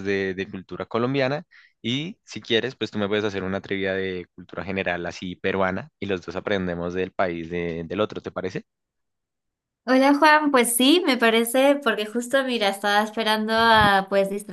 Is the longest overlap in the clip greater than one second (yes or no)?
no